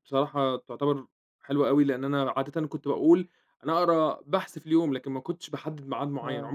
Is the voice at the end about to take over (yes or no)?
no